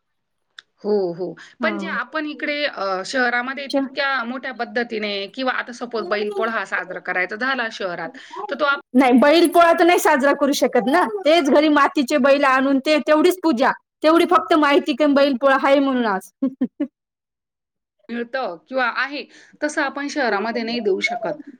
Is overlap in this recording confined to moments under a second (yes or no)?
yes